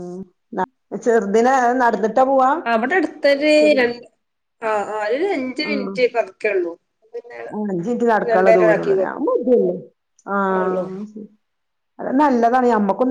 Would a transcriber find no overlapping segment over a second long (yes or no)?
yes